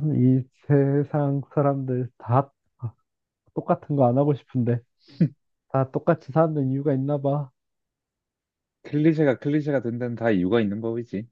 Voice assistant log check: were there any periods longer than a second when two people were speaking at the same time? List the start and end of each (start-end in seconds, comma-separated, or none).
none